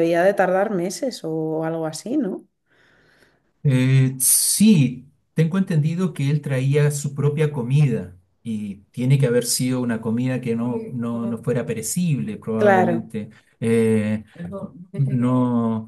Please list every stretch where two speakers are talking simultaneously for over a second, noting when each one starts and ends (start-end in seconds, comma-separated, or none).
none